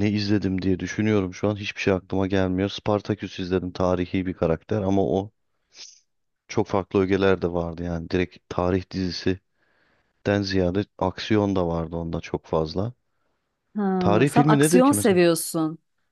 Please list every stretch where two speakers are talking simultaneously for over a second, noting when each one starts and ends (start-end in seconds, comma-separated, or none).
14.0-15.2